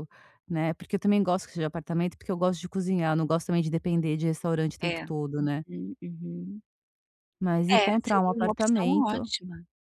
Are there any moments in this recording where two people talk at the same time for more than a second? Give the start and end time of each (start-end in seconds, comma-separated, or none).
7.7-9.3